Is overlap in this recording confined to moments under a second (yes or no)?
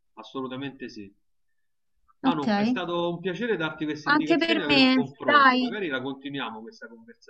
no